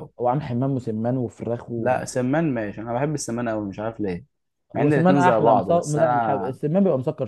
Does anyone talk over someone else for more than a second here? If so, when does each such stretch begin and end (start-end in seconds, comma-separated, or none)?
4.7-6.6